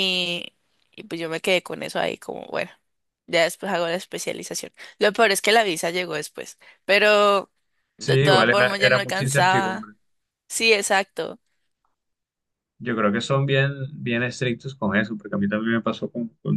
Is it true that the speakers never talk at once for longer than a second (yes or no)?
no